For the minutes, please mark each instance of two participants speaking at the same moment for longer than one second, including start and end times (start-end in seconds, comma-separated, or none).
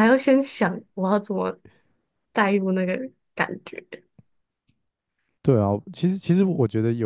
none